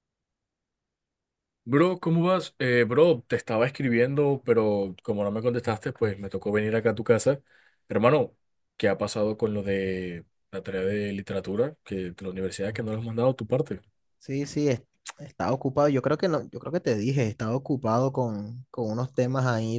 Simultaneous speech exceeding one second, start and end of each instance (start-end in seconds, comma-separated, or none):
none